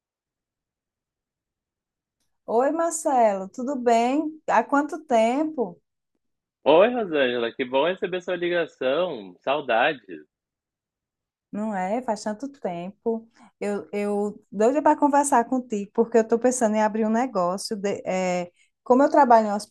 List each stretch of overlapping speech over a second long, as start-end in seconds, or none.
none